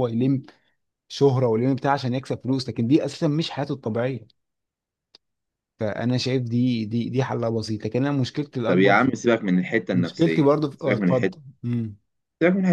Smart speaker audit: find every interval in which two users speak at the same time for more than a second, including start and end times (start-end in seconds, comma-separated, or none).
9.9-11.4